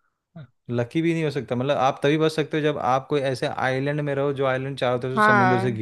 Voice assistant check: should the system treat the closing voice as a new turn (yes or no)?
yes